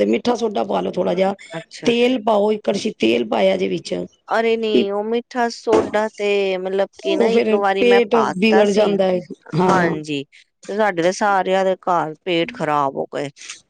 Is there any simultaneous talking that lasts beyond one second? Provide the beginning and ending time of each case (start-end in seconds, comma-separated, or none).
7.1-8.9